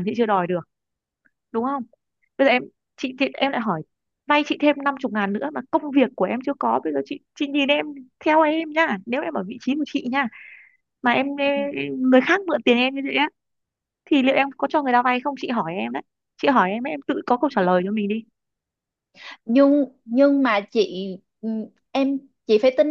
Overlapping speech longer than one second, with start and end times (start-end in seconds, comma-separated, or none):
none